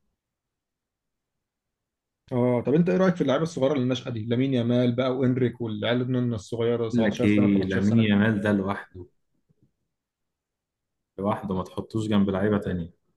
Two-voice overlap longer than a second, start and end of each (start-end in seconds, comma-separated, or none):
6.9-8.1